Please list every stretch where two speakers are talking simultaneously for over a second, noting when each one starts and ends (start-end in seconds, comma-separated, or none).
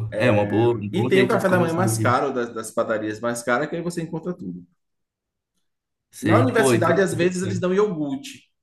0.9-2.1, 6.2-7.6